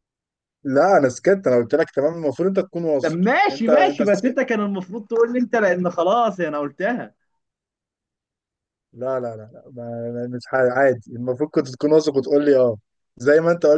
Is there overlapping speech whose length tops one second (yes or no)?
yes